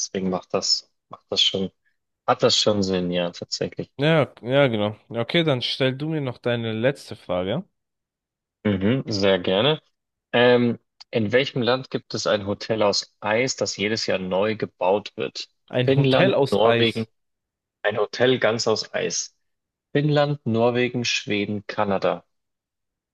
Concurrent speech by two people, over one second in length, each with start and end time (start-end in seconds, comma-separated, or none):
15.7-17.1